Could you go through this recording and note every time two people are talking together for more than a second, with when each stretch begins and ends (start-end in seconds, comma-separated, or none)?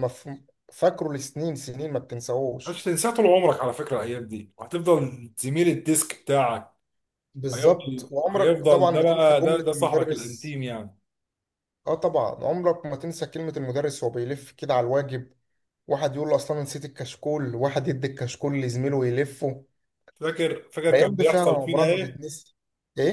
7.5-10.6, 20.9-22.2